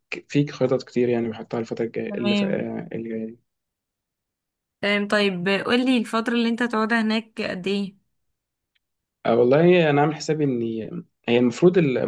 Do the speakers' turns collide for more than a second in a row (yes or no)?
no